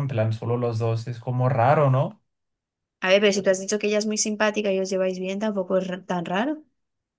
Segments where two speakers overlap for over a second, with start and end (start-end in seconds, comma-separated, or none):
none